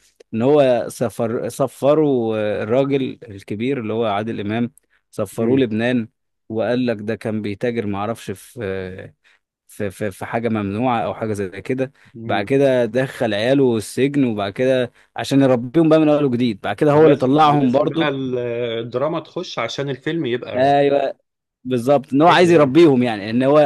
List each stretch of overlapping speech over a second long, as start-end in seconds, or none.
16.9-18.1